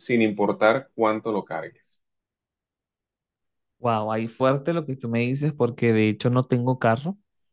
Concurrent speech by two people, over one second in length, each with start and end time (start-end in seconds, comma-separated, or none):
none